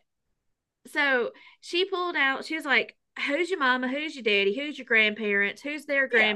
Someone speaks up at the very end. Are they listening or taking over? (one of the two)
listening